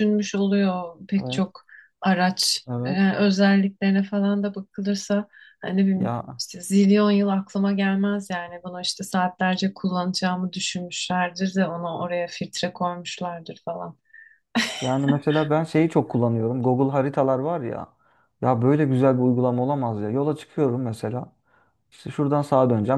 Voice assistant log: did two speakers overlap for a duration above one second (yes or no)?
no